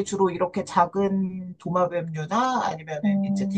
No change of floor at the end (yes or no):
yes